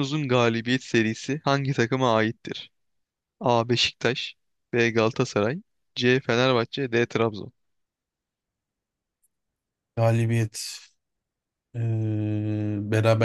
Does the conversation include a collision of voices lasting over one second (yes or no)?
no